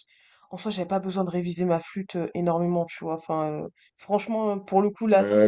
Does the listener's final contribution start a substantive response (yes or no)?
yes